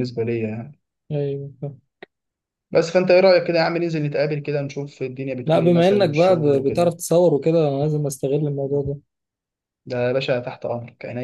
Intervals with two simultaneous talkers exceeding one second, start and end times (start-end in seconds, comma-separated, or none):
5.5-7.0